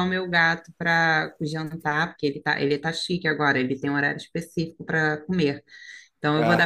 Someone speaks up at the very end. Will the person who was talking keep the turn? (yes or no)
yes